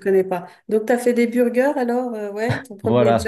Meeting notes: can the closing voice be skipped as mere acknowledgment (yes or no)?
no